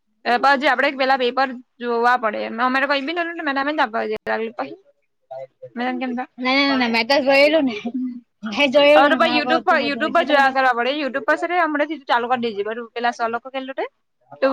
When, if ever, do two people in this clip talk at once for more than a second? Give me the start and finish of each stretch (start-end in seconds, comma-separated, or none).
8.7-10.5